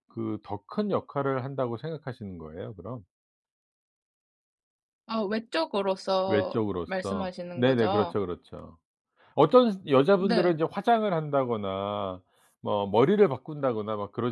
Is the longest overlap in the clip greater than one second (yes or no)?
yes